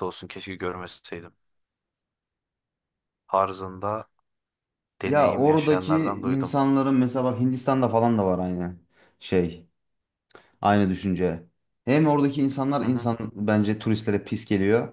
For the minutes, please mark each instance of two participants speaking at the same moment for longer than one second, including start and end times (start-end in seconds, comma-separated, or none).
5.1-6.6